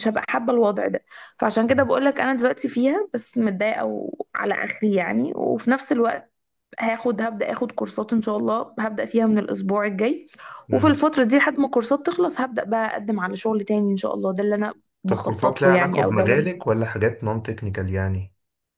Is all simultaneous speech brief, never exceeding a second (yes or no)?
no